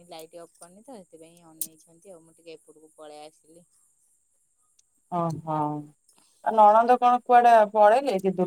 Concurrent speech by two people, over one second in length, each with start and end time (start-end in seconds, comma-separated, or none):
none